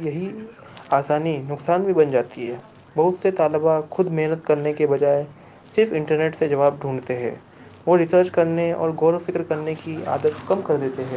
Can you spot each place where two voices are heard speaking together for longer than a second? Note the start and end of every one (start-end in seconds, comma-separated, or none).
5.8-7.2